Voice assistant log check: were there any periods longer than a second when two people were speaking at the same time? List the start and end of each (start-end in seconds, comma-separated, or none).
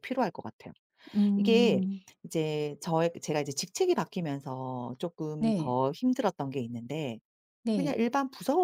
none